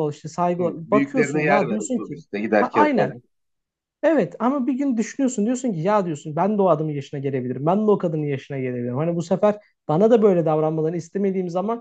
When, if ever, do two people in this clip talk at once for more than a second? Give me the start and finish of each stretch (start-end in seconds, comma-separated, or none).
0.6-3.1